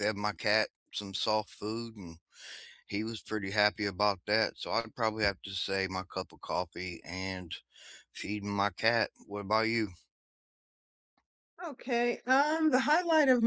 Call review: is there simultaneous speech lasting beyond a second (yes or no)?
no